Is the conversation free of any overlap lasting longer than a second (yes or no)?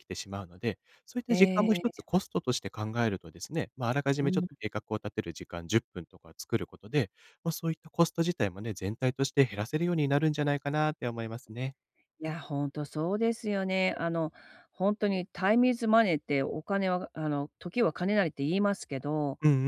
yes